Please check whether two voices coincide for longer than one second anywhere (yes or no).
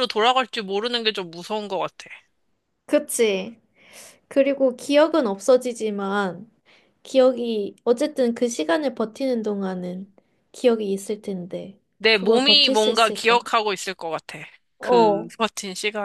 yes